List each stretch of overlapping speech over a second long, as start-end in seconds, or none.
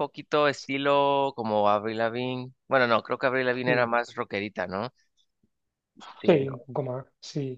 none